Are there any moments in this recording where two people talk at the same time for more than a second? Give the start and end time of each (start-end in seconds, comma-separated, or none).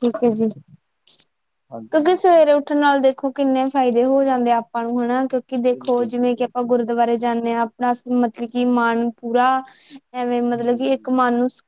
5.7-7.0